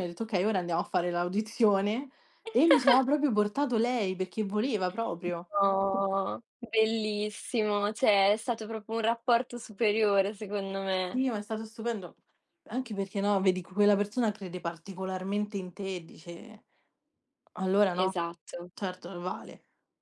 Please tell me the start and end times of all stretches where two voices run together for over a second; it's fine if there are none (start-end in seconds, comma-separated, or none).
none